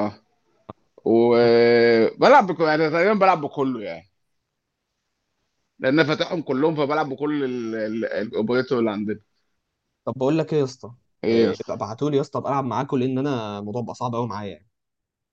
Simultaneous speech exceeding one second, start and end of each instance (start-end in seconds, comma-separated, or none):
none